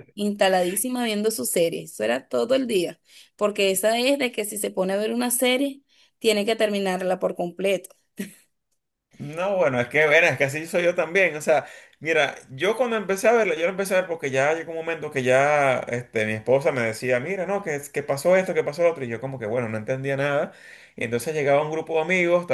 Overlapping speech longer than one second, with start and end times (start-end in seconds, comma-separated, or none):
none